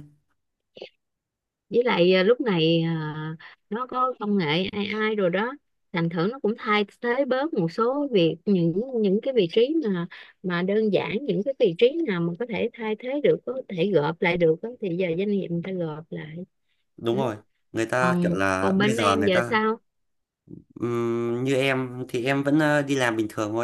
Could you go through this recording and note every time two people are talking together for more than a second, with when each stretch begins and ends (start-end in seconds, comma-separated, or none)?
18.0-19.6